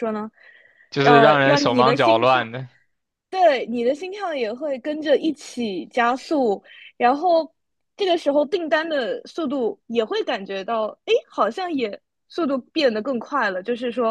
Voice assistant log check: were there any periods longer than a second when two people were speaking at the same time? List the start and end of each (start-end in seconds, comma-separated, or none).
1.0-2.5